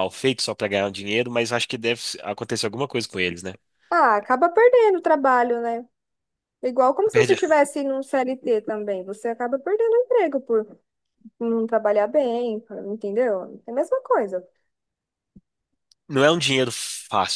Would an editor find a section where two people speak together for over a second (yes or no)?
no